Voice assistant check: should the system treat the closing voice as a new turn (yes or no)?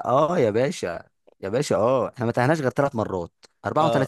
no